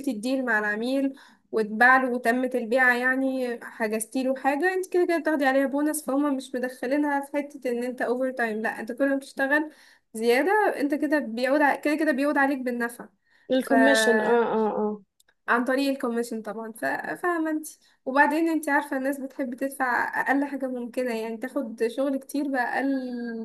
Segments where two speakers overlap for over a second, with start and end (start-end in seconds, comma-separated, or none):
none